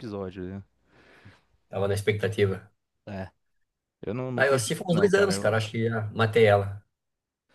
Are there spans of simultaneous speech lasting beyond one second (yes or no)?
yes